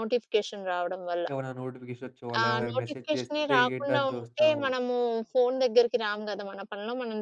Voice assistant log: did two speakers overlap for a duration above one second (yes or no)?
yes